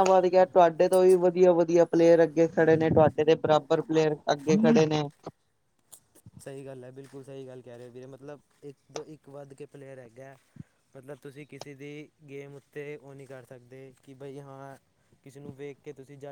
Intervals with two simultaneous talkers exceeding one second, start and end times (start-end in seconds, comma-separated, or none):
none